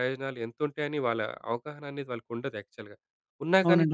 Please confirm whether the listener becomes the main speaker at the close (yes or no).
no